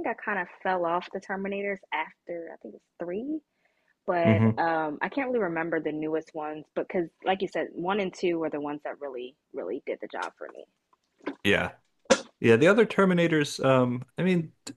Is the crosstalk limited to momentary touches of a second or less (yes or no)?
yes